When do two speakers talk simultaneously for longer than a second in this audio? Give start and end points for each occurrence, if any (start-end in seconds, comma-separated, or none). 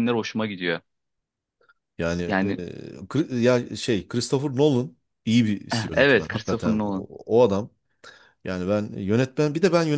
5.7-7.1